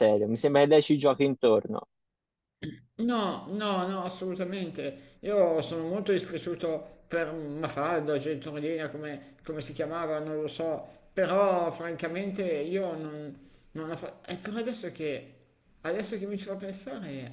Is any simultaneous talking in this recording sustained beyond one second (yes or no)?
no